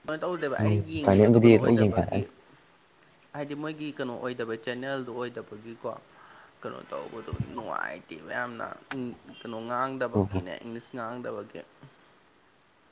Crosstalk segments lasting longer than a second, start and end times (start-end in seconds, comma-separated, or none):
0.6-2.2